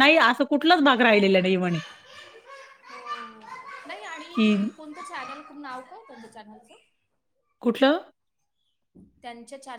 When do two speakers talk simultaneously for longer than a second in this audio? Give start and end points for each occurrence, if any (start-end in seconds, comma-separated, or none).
none